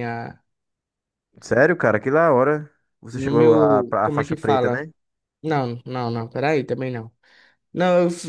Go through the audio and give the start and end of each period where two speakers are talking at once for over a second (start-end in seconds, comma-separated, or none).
3.1-4.8